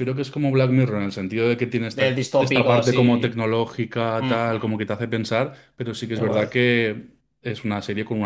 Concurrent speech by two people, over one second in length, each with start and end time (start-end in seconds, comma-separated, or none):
1.9-3.4